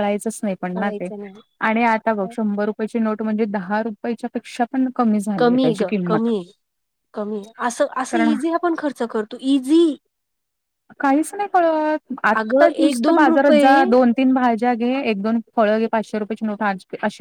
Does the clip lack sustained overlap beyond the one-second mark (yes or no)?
no